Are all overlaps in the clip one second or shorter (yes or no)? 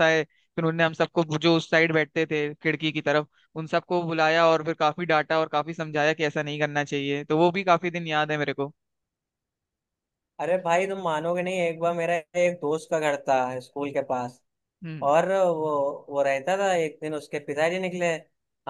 yes